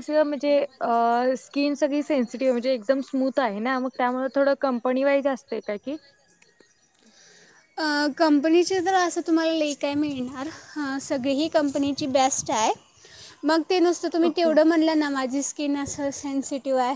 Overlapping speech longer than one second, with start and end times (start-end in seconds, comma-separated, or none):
none